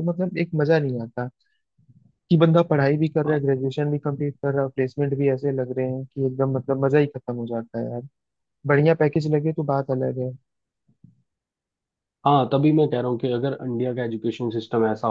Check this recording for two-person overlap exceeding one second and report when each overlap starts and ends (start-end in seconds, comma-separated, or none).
none